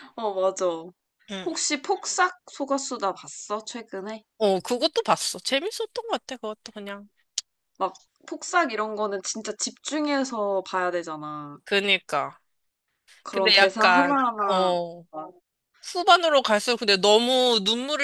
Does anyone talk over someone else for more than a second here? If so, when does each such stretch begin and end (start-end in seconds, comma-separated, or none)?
13.3-14.7